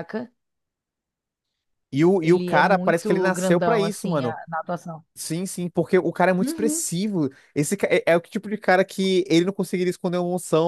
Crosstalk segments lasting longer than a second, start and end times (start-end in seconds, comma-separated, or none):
2.2-4.4